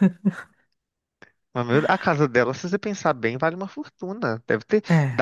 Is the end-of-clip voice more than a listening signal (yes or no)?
no